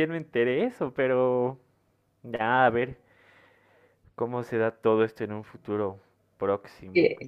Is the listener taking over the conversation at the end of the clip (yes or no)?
no